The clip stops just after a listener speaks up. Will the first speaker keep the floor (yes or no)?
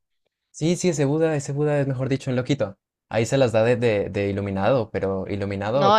no